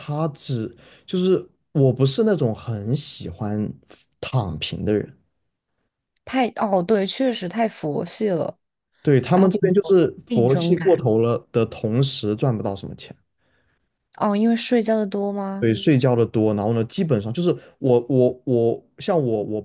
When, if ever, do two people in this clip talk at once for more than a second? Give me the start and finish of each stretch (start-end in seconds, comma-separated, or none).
9.3-11.0